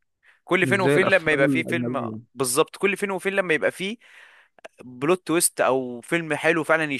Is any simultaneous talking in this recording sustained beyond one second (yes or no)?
yes